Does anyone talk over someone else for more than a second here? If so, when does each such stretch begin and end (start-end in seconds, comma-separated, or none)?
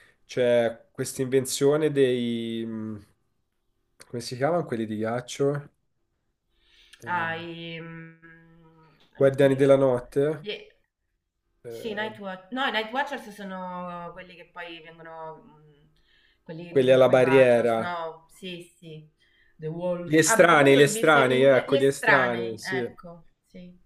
16.7-18.0, 20.0-22.8